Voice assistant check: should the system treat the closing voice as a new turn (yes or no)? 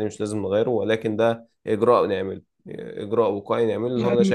yes